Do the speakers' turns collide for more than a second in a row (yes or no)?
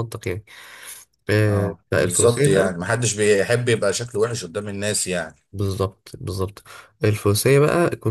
yes